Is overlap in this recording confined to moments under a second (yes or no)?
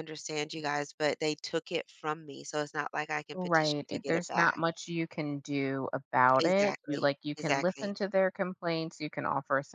no